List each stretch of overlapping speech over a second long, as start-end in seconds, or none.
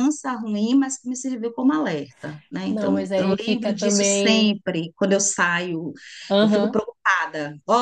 2.7-4.5